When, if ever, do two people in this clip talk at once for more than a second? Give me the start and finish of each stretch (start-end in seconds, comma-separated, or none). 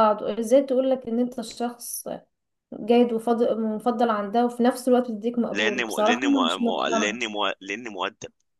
5.5-7.2